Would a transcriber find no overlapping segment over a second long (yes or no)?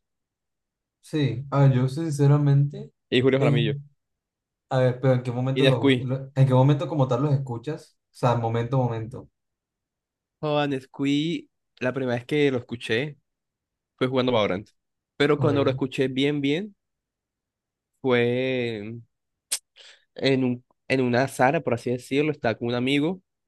yes